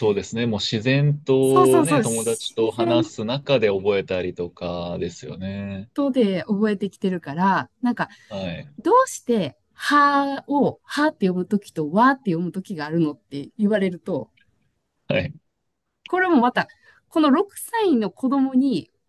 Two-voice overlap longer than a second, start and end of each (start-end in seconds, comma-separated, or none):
1.4-3.0